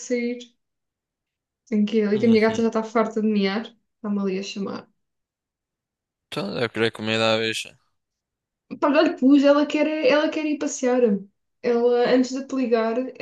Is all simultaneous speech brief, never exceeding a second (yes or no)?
yes